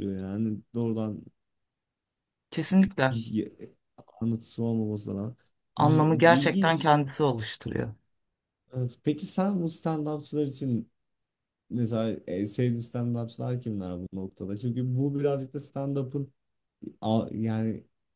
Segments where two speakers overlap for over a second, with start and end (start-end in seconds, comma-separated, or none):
5.8-7.0